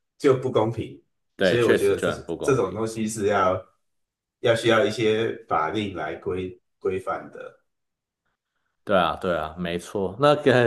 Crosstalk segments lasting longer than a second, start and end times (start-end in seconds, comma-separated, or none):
1.4-2.8